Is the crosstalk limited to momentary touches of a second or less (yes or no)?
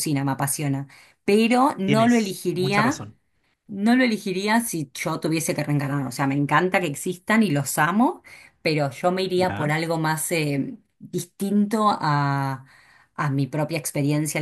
no